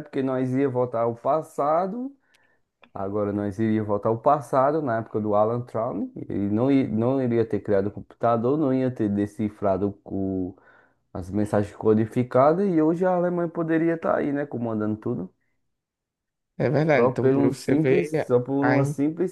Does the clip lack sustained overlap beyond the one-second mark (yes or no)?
no